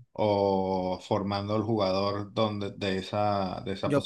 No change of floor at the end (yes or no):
no